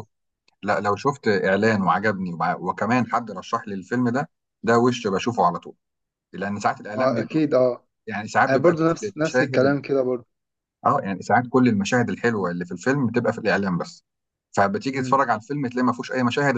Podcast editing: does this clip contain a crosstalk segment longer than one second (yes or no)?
yes